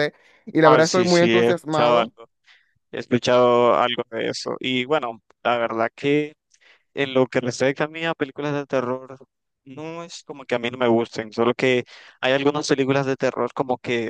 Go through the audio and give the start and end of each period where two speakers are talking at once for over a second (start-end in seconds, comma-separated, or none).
0.6-2.1